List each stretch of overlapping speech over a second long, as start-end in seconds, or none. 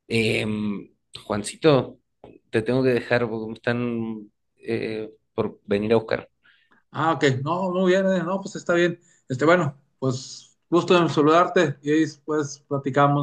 none